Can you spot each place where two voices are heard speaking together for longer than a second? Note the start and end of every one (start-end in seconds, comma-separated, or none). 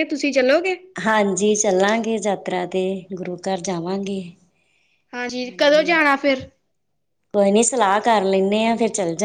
none